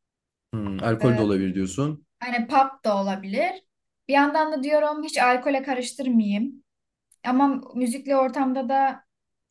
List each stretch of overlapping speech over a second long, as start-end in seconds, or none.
none